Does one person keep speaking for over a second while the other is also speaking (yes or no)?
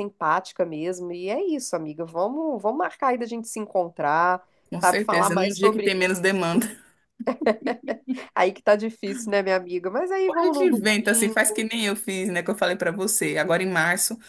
yes